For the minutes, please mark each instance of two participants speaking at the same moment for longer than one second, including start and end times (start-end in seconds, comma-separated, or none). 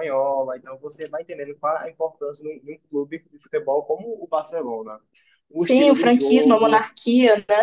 5.6-6.9